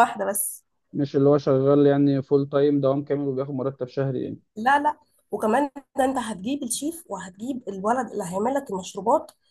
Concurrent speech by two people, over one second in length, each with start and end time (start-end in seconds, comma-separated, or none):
none